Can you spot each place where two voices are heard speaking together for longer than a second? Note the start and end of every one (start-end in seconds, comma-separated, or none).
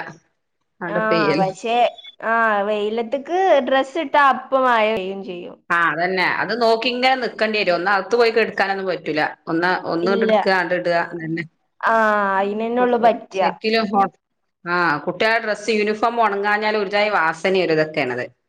none